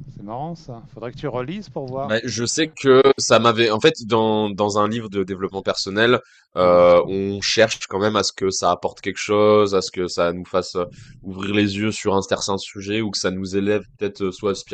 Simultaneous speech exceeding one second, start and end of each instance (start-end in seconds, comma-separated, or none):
none